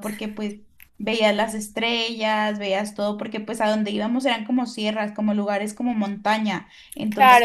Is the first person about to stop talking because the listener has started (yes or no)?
yes